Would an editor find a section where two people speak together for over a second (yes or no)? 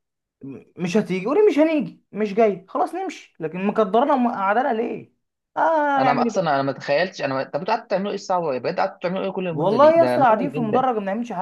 yes